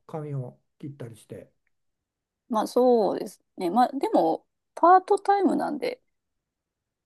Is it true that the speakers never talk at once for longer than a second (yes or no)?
yes